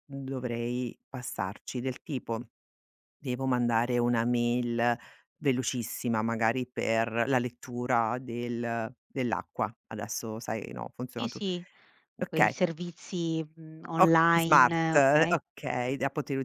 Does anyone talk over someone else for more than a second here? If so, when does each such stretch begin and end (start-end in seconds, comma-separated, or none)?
14.0-15.4